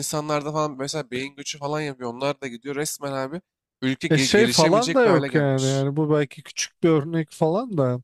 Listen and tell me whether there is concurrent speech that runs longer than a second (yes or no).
yes